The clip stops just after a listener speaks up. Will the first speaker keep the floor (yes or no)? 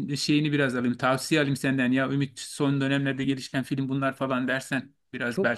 no